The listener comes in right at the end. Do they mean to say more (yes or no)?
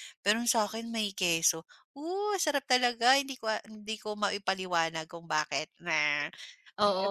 yes